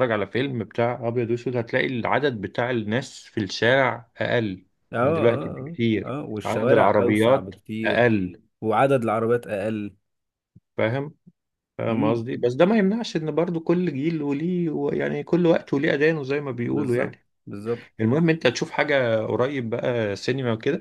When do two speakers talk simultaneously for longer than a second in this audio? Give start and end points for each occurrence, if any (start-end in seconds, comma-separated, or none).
5.0-8.1